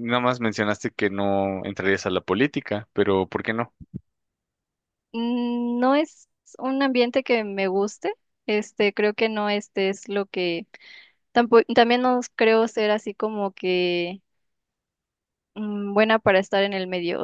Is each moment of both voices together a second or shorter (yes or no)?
yes